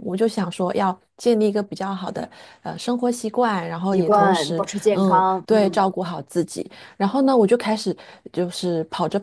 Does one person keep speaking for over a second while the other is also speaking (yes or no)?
yes